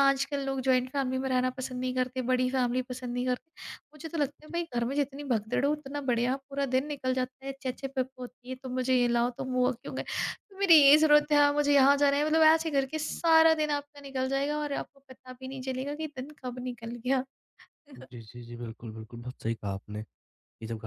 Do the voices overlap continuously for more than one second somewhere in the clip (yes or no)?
no